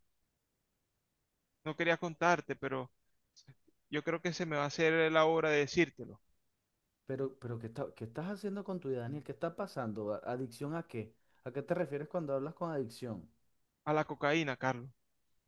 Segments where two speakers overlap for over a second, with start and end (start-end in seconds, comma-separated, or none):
none